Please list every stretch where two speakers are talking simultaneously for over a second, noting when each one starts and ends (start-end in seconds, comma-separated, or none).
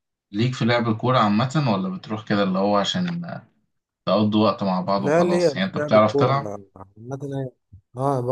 5.0-6.5